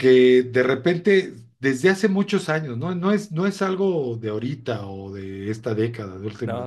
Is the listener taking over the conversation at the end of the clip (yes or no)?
no